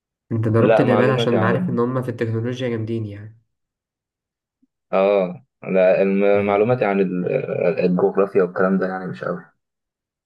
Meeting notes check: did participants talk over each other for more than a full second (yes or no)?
yes